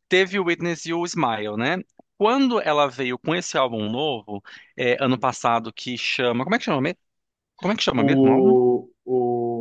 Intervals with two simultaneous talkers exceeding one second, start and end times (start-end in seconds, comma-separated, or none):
none